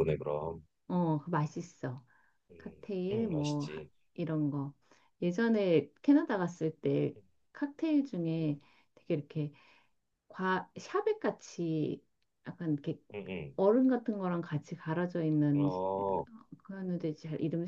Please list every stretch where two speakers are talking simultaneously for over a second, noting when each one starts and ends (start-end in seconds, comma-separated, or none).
2.6-3.9